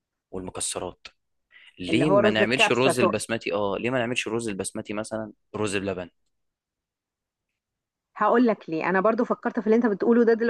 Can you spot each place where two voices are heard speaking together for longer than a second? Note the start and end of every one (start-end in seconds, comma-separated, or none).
1.9-3.2